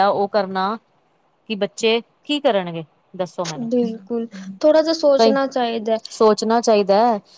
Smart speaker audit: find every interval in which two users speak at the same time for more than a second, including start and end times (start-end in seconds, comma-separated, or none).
none